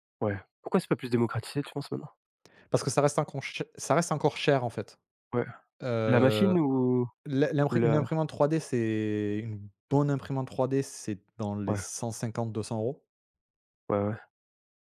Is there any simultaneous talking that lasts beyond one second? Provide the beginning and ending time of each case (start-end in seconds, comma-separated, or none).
none